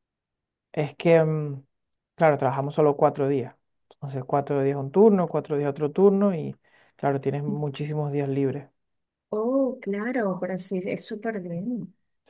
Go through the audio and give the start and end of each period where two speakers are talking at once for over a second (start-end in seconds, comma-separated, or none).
none